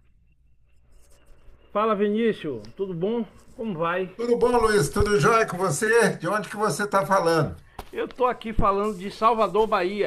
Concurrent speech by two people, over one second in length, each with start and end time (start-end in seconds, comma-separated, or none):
none